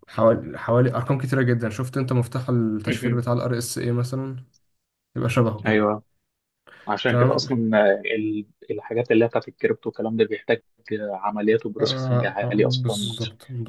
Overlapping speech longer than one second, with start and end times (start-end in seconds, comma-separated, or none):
11.8-13.2